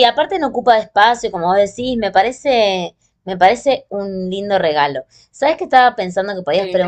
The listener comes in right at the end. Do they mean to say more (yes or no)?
no